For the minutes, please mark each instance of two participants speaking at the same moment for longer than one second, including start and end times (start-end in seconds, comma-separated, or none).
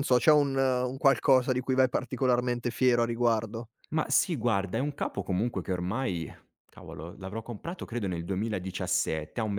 none